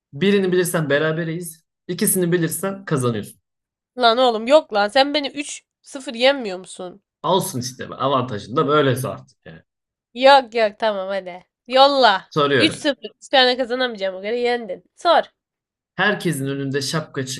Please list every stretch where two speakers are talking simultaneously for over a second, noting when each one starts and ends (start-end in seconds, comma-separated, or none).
none